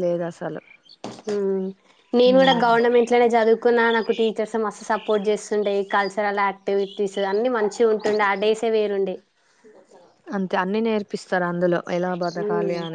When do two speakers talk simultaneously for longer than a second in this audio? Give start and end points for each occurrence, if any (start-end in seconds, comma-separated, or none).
none